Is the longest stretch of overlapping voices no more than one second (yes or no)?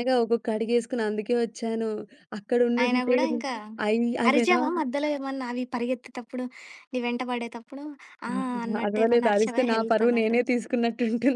no